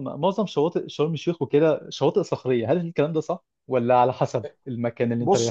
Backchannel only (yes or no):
no